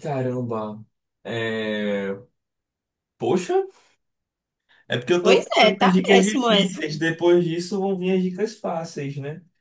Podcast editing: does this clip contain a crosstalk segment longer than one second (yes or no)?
yes